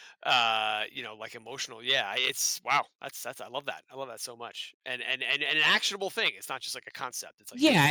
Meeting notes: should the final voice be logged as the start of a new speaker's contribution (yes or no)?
yes